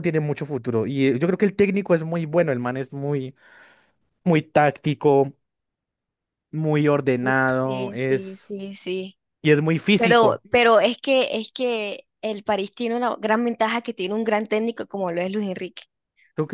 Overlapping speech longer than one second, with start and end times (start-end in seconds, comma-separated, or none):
7.2-8.5